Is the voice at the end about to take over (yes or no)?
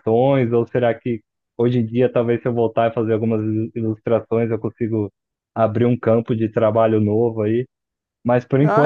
yes